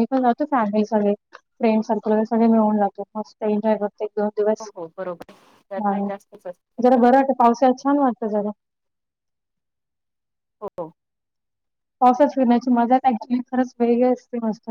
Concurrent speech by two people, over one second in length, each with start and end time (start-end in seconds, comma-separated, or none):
none